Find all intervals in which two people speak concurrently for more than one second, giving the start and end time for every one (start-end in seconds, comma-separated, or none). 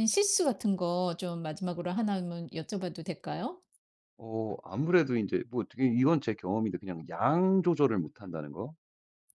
none